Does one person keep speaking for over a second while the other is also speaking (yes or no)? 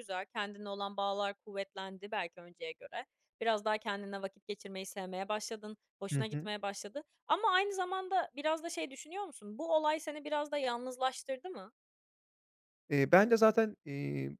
no